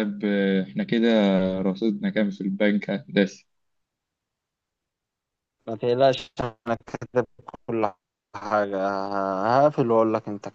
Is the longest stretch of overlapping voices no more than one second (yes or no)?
yes